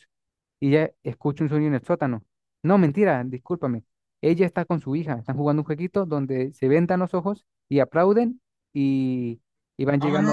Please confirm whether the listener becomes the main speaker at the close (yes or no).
yes